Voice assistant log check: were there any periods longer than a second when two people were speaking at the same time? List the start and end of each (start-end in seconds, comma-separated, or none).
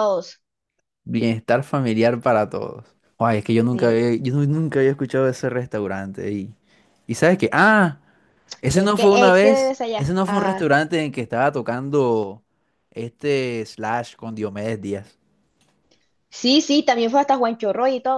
8.7-10.7